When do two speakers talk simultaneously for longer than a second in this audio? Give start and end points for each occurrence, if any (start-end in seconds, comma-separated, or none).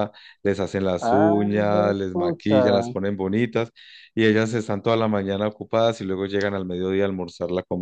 1.0-2.5